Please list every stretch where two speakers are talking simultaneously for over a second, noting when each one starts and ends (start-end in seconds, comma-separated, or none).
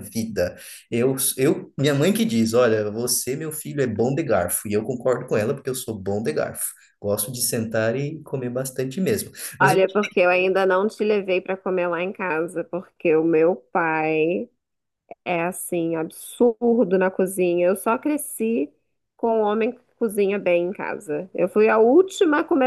none